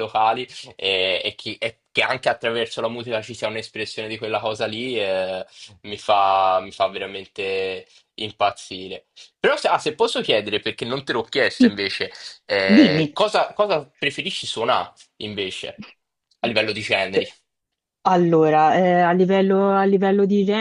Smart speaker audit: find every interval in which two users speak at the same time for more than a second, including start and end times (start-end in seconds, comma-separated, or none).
none